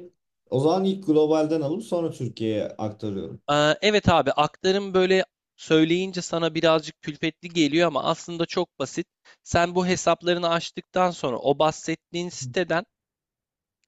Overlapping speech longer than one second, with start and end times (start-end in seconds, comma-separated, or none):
none